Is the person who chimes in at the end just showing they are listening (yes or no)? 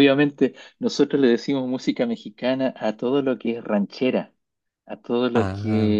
yes